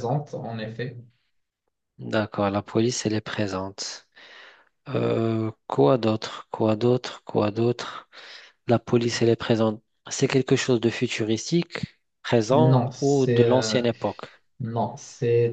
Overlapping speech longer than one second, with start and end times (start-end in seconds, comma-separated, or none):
12.5-13.8